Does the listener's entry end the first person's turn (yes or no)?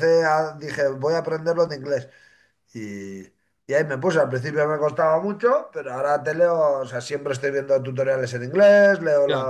no